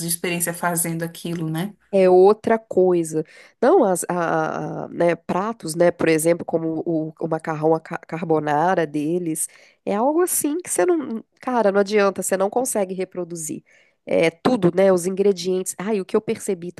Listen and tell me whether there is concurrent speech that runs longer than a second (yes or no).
no